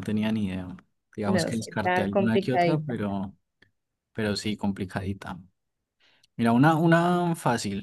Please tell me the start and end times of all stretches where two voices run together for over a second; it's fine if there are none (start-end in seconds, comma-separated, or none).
1.2-2.9